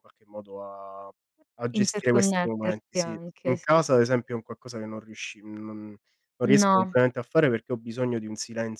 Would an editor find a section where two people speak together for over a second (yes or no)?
yes